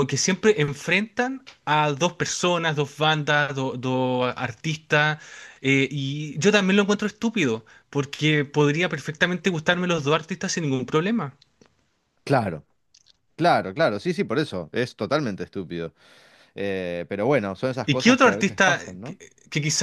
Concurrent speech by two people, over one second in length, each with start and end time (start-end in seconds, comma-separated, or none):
17.8-19.2